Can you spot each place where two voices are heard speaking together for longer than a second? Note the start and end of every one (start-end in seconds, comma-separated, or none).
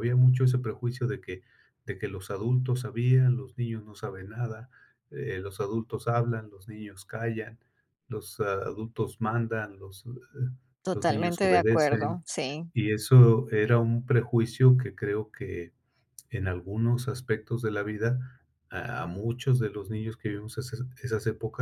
10.9-12.2